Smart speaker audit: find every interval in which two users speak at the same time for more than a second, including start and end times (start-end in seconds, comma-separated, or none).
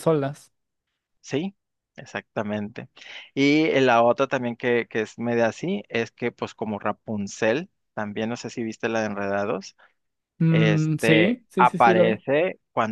10.5-12.2